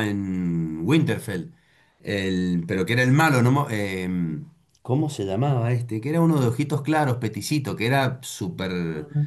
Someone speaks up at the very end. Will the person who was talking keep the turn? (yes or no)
no